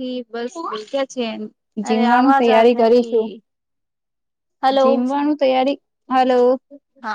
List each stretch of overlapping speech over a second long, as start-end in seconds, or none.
1.9-3.3